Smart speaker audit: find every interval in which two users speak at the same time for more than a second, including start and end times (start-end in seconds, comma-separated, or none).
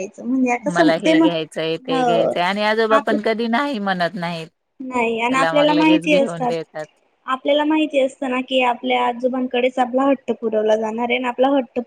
5.3-6.5